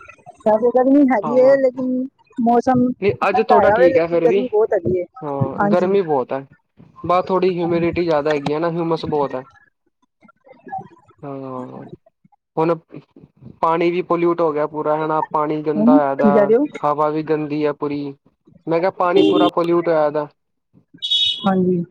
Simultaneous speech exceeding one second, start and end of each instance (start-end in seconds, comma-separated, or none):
2.5-4.4